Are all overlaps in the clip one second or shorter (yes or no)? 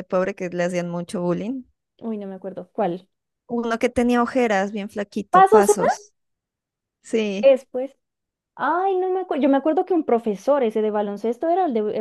yes